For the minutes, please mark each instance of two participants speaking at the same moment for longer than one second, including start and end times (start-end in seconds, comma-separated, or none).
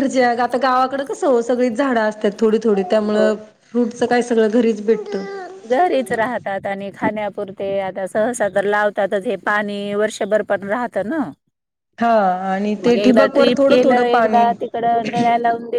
12.8-14.4